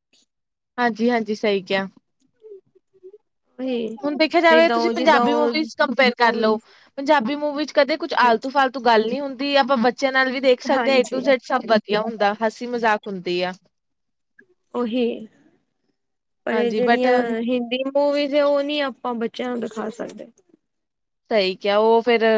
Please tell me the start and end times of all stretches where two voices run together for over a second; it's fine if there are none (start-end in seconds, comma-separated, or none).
4.0-5.5